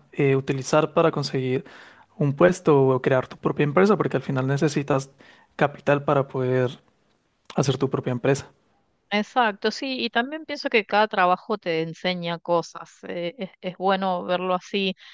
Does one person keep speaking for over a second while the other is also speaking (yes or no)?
no